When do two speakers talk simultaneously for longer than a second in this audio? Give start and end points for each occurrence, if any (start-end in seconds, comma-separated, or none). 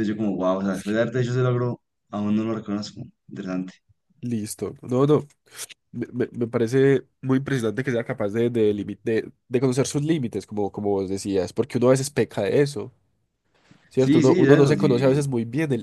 13.9-15.2